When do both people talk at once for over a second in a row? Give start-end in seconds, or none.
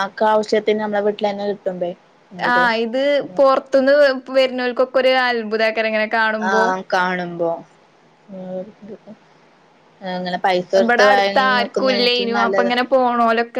10.8-12.7